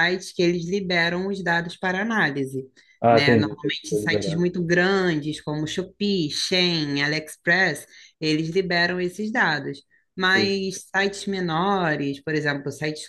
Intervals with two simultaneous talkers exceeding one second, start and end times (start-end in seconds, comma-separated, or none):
3.1-4.4